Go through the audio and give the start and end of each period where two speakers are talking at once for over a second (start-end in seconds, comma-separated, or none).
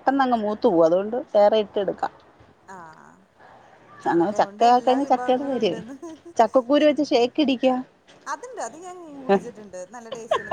4.1-5.8